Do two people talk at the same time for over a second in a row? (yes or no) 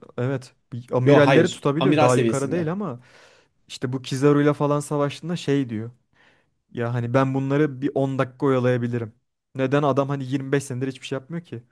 yes